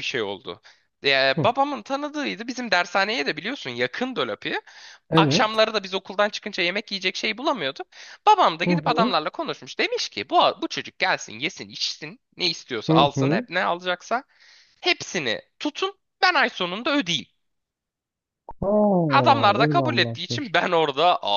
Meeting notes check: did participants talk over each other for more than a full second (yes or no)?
yes